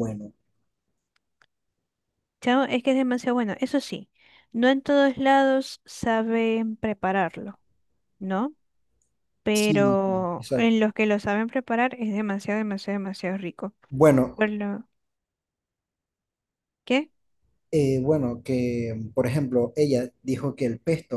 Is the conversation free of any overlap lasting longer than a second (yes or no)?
no